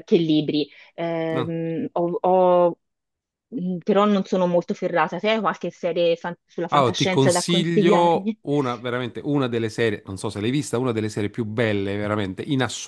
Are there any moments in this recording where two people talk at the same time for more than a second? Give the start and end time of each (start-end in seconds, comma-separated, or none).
6.7-8.4